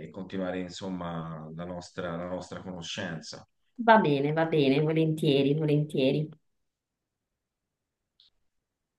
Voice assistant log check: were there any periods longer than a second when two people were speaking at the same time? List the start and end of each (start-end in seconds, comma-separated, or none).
none